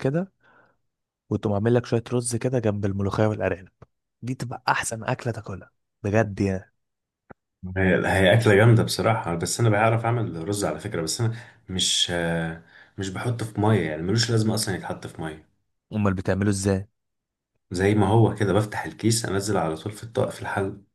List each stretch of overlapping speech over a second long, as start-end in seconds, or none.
none